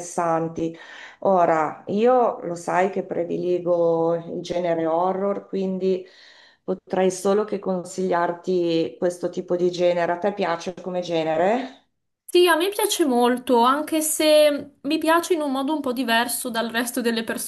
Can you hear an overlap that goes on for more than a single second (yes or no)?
no